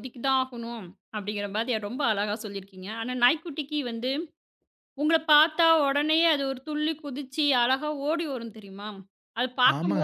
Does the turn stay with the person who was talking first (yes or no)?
no